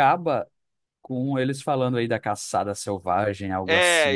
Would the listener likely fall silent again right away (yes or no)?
no